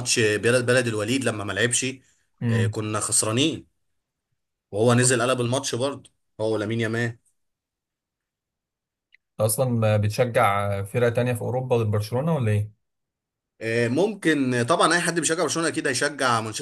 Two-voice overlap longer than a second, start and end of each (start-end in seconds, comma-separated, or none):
none